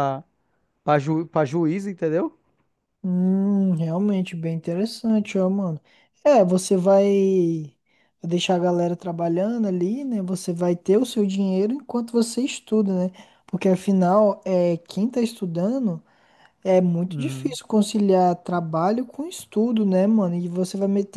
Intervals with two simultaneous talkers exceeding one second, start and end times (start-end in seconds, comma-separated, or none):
none